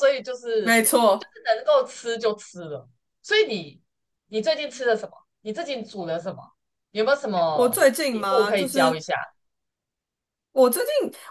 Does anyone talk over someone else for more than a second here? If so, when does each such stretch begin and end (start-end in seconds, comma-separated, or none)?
7.5-9.0